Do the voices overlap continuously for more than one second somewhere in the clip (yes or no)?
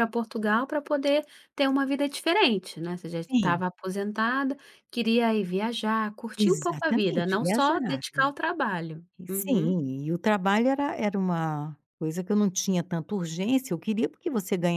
yes